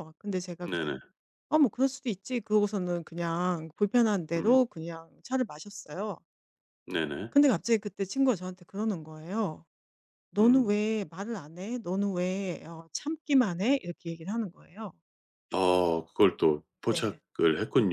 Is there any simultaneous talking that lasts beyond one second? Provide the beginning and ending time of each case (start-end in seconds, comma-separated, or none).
none